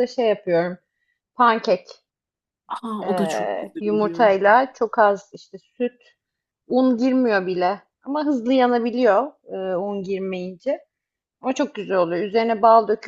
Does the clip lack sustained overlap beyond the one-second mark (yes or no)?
no